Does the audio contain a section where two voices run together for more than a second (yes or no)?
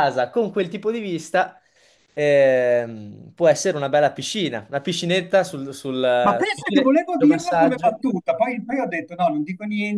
yes